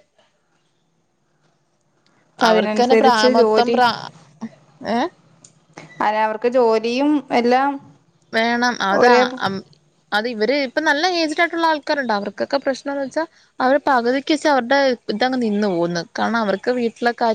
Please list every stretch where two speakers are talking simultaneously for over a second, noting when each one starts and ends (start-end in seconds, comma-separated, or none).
2.5-3.8